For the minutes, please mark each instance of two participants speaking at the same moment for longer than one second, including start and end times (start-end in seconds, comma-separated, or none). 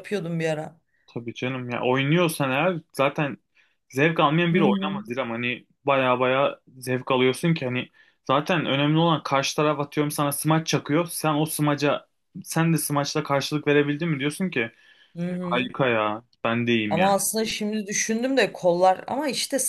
none